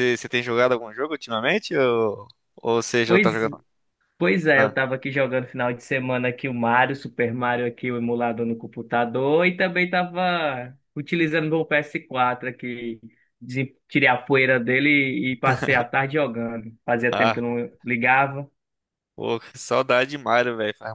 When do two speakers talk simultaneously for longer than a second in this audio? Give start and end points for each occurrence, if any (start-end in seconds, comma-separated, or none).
none